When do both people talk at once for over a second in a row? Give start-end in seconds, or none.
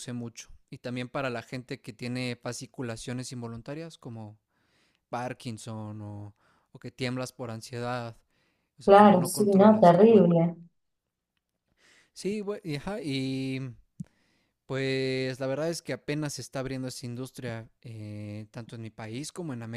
8.8-10.3